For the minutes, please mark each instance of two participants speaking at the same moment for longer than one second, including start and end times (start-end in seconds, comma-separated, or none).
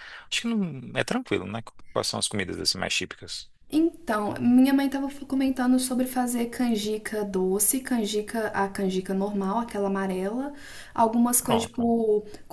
none